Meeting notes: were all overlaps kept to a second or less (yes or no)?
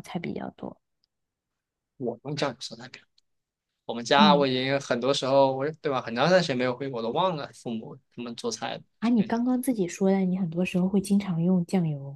yes